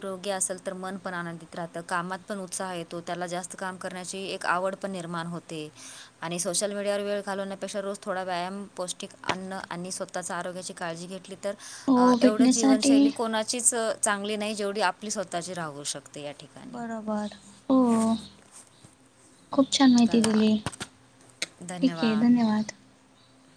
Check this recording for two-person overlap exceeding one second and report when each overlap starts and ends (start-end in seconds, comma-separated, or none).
11.9-13.1